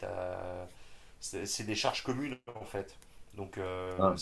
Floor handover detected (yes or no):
no